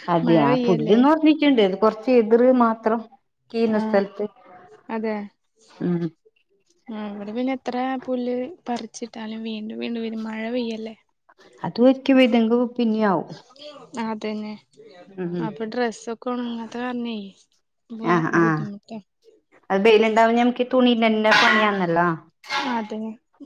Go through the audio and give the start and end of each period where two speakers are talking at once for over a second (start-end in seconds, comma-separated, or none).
none